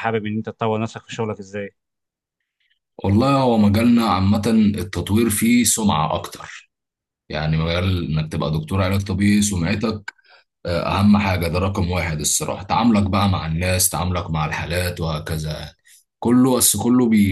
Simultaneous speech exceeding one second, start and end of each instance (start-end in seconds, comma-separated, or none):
none